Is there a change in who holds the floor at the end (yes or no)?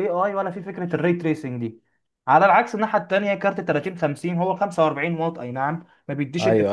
no